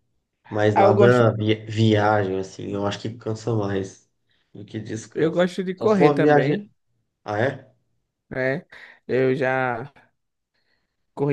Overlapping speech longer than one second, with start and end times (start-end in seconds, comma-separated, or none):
5.1-6.7